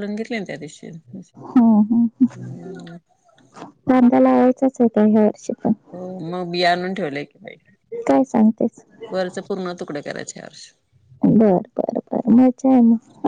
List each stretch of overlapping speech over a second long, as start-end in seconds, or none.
none